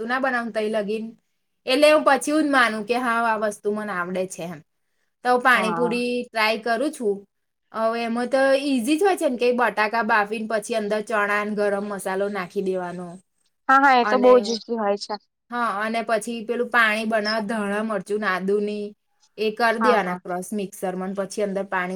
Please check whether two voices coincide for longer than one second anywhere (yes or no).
no